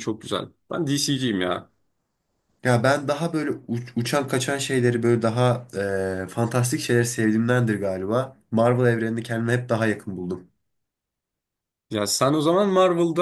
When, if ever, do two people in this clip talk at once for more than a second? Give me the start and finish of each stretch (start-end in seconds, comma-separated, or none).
none